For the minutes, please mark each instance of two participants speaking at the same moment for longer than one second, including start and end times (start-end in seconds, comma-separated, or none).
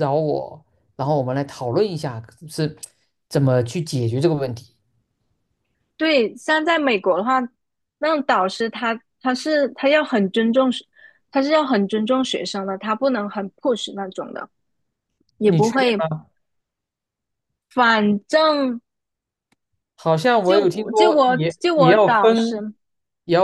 20.4-22.6